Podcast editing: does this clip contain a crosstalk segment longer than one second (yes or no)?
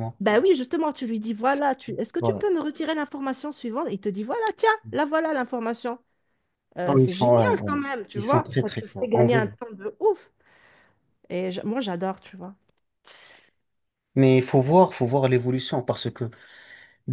yes